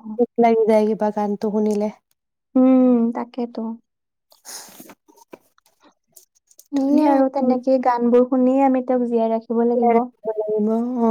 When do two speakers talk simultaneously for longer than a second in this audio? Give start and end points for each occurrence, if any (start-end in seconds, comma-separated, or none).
none